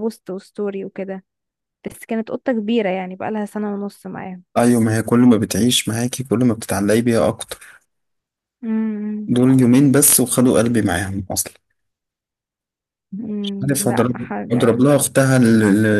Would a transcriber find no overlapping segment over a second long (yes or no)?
no